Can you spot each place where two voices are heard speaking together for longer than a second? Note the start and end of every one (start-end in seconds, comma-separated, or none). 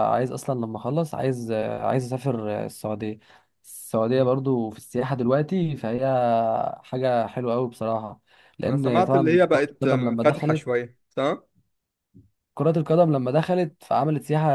8.7-10.7